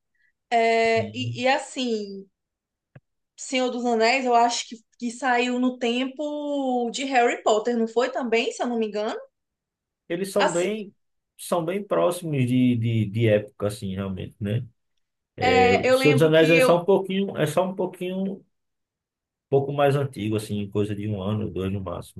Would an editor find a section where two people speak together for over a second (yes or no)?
yes